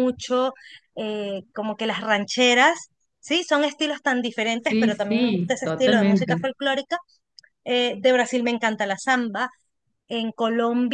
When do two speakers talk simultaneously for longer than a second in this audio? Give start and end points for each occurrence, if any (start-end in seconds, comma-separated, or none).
4.6-6.5